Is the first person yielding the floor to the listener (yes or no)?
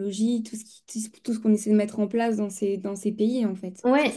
yes